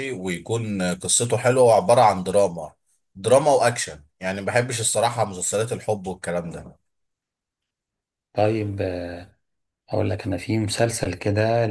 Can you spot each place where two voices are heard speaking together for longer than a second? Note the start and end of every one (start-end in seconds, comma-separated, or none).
none